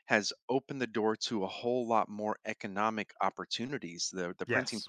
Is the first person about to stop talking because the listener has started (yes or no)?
no